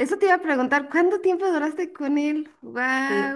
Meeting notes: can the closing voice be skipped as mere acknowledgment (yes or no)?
no